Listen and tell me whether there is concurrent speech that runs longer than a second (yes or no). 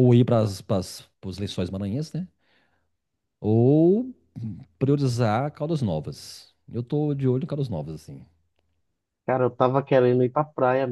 no